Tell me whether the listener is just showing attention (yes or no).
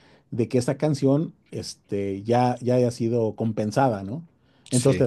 yes